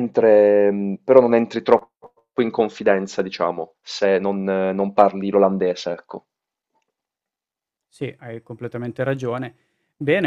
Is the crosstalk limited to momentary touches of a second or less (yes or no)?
yes